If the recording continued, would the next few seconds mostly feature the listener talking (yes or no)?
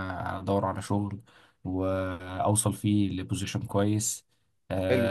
no